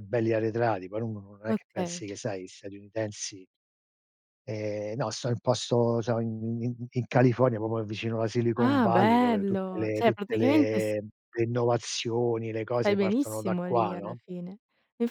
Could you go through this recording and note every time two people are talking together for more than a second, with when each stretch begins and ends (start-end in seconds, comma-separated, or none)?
8.6-10.9, 12.8-14.2